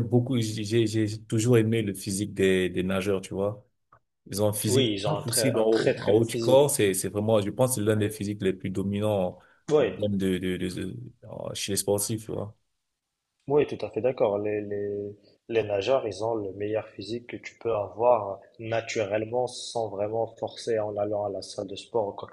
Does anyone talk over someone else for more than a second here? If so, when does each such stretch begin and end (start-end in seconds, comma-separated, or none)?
4.7-6.7